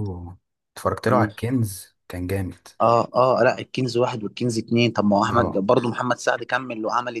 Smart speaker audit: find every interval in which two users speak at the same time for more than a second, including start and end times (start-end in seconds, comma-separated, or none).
none